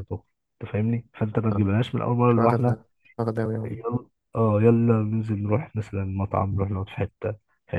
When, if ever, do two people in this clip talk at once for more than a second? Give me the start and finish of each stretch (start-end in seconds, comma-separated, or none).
none